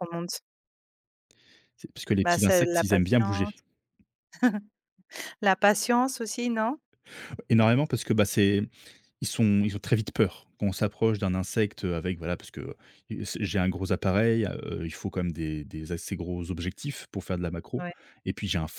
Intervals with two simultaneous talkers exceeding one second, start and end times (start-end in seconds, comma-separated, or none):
2.2-3.5